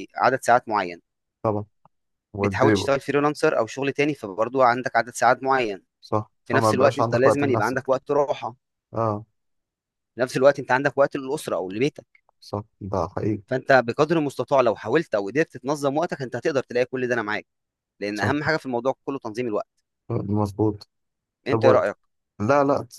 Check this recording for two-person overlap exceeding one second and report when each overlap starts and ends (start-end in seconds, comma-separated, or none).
6.4-8.0